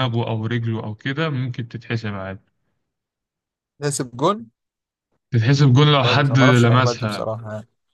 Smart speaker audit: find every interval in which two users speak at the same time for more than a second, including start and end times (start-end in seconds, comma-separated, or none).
6.0-7.3